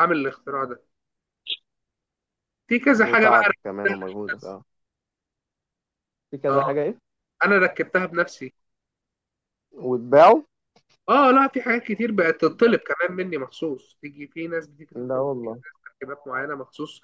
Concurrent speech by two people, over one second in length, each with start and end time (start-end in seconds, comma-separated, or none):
3.0-4.6